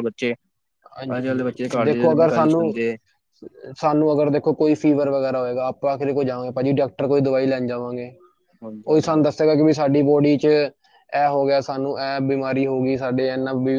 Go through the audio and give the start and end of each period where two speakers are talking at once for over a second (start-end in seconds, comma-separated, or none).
1.2-2.7